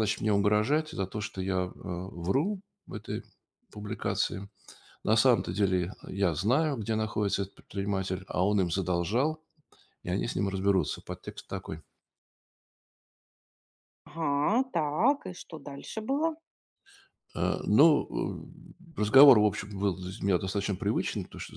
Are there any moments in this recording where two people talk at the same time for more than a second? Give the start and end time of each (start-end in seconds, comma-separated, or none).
none